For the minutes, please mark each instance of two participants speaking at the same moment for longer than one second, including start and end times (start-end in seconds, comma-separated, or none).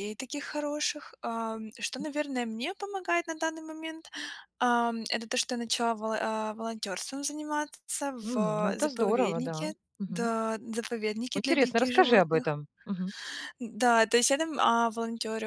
8.2-10.3, 11.3-12.6